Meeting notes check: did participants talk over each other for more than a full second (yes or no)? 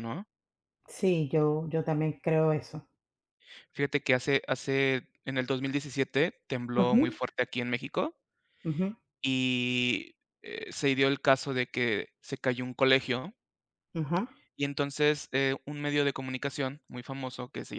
no